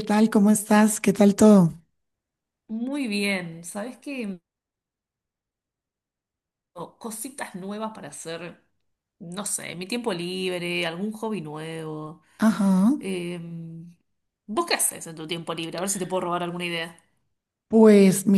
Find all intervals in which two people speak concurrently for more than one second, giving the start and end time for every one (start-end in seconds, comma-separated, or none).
none